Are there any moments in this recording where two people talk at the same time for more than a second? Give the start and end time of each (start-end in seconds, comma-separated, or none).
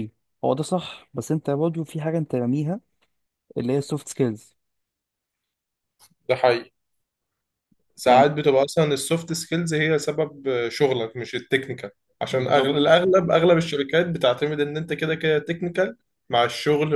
none